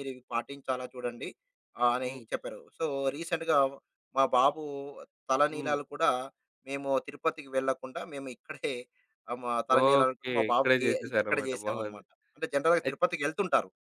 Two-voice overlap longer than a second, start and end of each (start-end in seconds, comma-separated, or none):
9.8-12.0